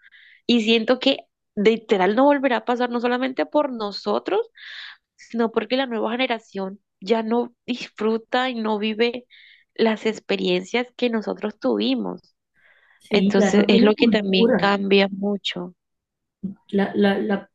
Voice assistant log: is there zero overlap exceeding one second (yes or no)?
no